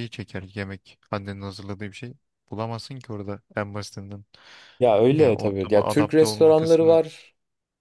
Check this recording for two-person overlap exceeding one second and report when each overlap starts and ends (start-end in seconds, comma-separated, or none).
5.2-7.0